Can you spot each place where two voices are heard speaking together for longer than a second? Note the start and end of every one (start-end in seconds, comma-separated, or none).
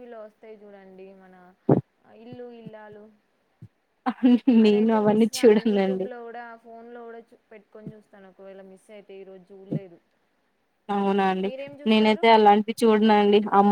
4.7-6.1